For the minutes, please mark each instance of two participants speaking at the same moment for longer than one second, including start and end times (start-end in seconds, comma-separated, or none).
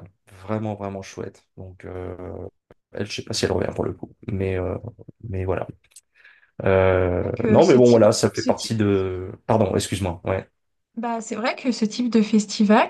7.2-8.8